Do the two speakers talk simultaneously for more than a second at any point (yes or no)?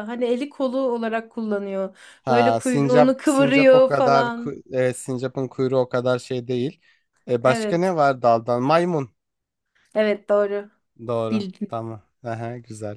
yes